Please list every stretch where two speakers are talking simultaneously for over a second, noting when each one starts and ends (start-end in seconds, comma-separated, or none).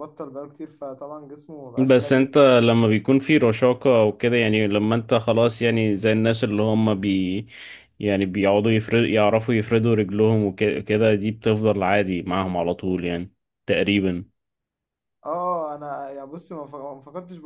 none